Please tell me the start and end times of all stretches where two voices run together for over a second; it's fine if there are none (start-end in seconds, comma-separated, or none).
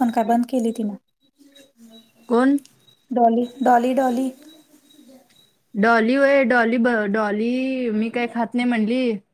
none